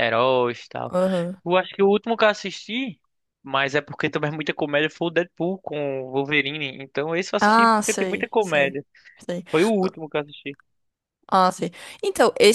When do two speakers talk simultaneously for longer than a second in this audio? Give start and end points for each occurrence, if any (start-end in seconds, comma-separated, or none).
7.4-8.8